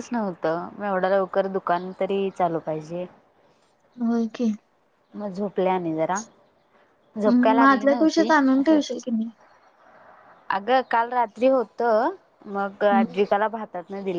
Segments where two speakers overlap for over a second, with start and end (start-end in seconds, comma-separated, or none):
7.3-8.8